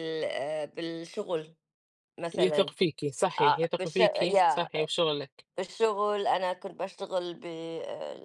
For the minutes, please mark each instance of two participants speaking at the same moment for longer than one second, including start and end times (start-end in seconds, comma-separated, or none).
3.4-4.7